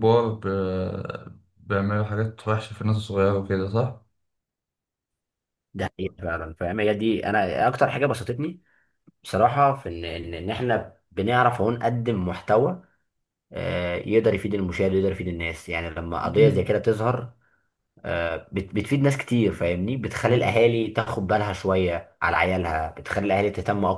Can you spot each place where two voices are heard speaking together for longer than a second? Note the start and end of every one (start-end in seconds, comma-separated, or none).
none